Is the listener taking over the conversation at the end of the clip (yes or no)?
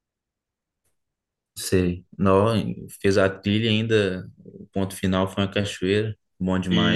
yes